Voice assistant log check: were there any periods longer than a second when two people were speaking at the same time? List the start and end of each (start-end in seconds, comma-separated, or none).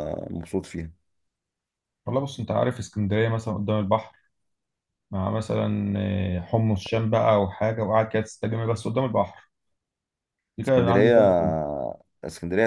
none